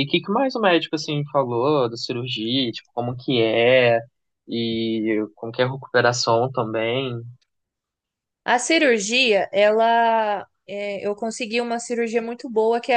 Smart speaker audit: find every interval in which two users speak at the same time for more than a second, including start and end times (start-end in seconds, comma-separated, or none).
none